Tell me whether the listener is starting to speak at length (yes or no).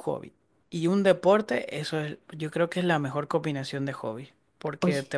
no